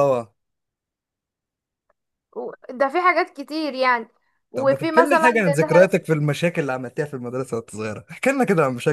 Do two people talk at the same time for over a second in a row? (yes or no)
yes